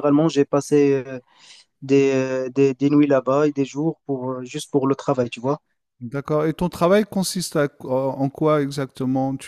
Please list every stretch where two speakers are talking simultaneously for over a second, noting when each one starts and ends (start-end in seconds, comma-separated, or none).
none